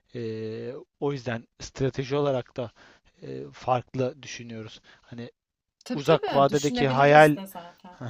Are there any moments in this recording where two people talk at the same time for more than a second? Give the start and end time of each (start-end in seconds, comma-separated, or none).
5.9-7.4